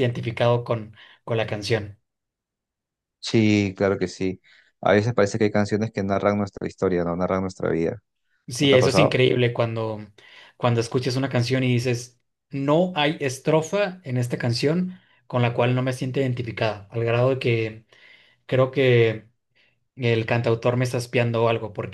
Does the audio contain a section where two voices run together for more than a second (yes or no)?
no